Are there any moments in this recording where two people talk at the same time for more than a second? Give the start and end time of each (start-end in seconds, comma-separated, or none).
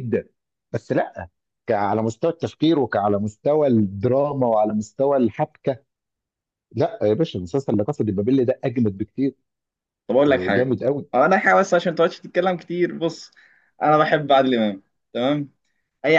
none